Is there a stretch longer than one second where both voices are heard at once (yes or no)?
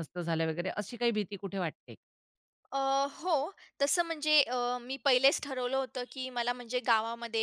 no